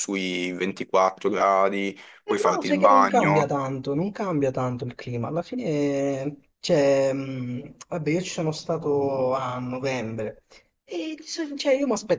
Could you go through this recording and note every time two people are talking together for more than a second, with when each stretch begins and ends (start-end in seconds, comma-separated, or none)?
2.3-3.5